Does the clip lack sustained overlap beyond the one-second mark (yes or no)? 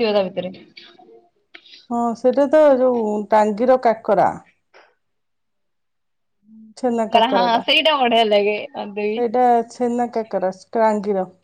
yes